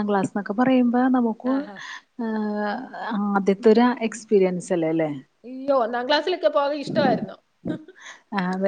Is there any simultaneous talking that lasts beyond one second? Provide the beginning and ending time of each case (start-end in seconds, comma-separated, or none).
none